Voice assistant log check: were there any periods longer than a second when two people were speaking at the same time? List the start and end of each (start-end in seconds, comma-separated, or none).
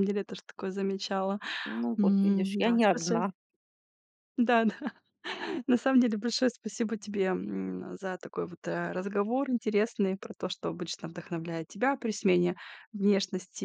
2.0-3.2